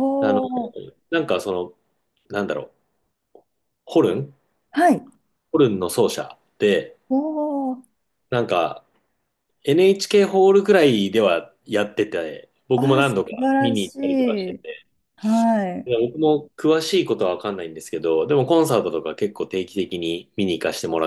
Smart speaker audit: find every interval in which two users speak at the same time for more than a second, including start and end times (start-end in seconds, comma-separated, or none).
12.7-14.6